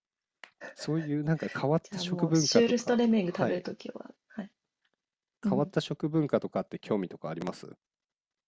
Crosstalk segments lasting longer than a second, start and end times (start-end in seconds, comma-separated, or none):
1.8-3.6